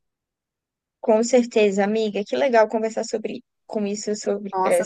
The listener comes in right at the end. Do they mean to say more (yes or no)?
yes